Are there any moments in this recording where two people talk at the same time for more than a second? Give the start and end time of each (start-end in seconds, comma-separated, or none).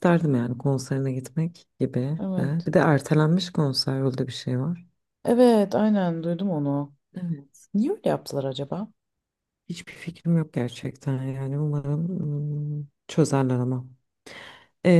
none